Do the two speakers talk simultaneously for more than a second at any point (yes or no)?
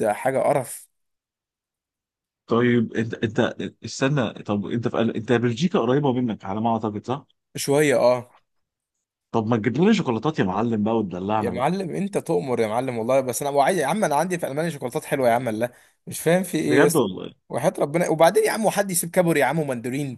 no